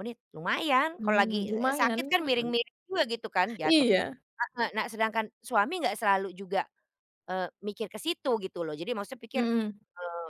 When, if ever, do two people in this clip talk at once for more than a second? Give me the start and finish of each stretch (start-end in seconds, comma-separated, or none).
1.0-2.5